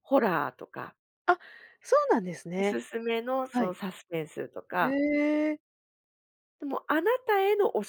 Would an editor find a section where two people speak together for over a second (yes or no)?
no